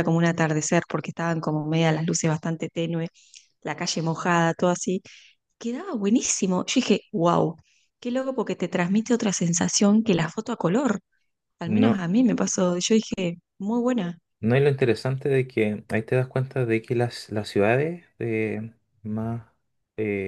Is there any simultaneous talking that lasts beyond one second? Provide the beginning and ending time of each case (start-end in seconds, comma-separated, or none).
none